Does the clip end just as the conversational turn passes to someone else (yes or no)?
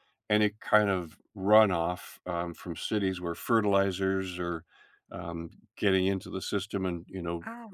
no